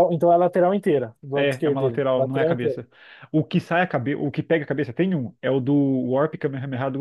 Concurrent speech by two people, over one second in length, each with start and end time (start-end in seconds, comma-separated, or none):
1.3-2.8